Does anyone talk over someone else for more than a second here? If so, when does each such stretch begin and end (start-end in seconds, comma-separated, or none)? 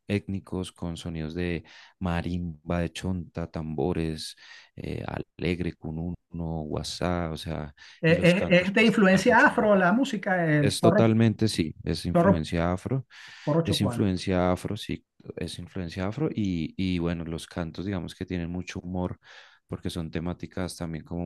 8.0-9.7